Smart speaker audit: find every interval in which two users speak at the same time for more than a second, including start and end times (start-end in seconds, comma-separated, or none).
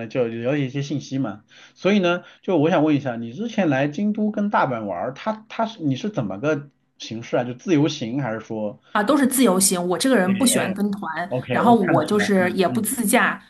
11.5-12.9